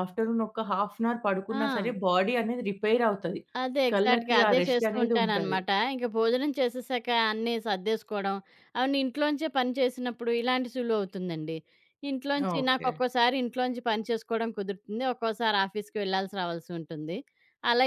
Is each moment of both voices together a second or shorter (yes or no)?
no